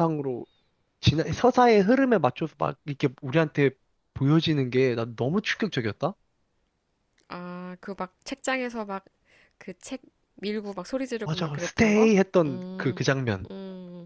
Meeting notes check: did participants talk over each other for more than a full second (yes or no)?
yes